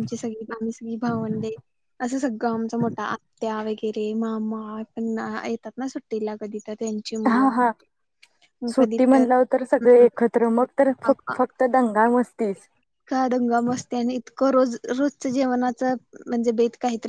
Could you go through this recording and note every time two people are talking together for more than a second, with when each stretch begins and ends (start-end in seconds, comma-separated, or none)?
none